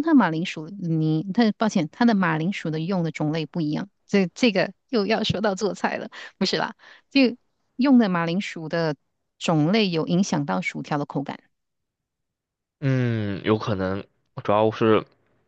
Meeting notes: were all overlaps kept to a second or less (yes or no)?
yes